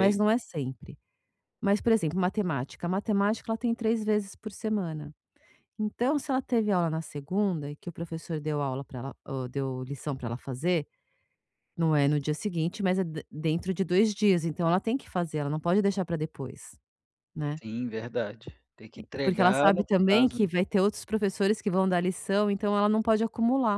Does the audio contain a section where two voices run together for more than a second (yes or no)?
yes